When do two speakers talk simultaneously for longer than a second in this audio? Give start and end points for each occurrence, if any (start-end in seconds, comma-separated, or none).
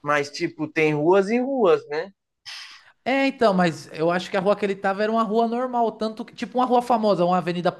none